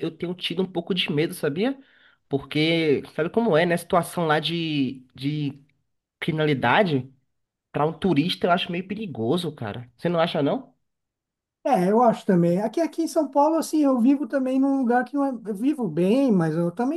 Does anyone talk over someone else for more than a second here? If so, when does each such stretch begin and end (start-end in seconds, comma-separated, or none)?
none